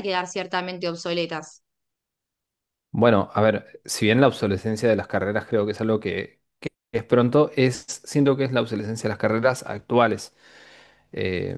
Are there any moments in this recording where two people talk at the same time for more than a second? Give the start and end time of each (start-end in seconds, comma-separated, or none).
none